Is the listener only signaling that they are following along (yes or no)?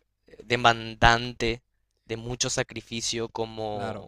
no